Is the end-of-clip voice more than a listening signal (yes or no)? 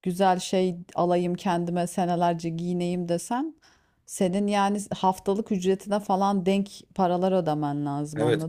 yes